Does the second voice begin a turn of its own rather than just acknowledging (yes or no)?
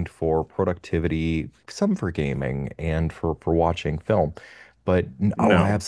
no